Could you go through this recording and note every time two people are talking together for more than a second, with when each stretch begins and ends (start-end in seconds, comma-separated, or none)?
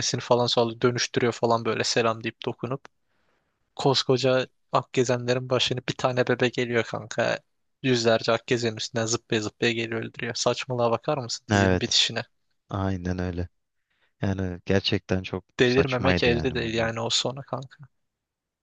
15.6-16.9